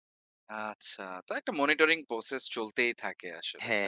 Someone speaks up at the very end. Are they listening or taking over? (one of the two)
taking over